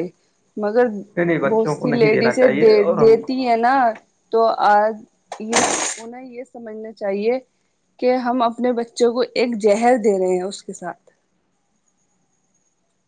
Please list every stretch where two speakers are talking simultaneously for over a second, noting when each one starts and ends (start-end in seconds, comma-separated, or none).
1.5-3.1